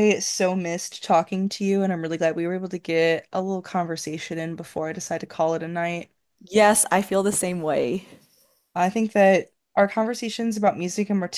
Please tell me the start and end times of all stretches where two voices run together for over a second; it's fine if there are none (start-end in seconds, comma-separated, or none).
none